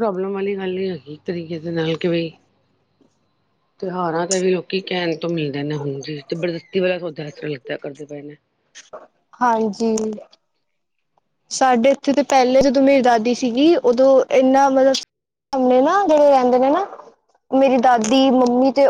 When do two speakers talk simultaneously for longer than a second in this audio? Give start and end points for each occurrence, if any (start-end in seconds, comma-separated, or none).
none